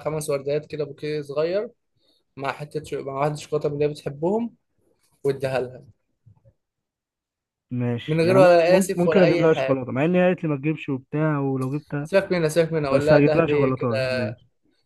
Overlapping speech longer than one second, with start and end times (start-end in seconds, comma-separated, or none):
8.1-9.8, 12.9-14.3